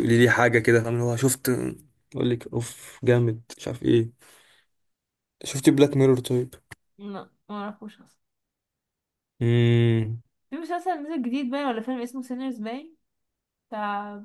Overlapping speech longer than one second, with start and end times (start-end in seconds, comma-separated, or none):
none